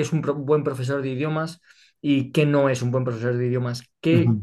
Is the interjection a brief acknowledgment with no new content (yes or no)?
yes